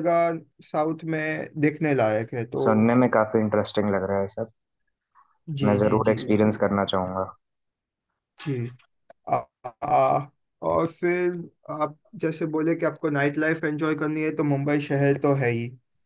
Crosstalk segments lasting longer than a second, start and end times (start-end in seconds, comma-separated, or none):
none